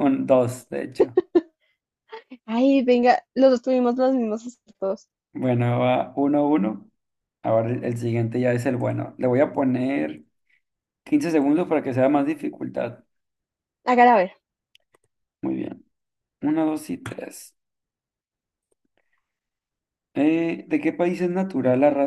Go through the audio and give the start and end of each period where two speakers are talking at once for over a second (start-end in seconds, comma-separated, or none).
none